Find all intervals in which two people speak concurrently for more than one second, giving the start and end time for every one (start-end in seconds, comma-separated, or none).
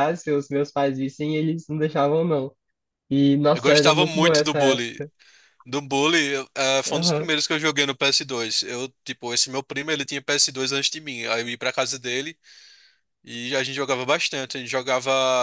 3.5-5.0